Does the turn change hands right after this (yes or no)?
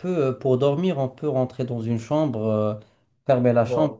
no